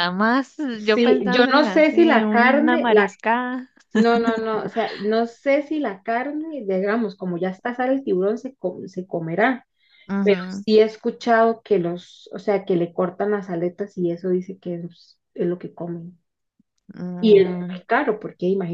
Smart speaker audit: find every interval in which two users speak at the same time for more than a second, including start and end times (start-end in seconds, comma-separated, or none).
0.7-3.1